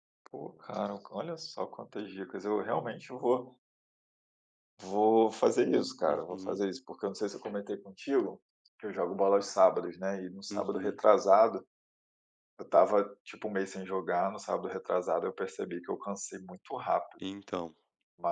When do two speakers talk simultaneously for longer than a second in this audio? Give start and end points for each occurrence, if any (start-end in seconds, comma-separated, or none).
none